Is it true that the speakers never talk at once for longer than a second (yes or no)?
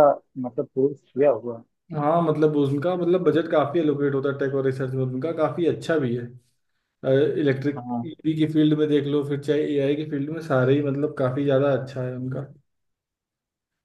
yes